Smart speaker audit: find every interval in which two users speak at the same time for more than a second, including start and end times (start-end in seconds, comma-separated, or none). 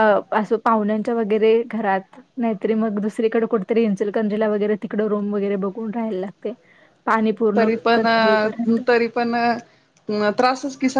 none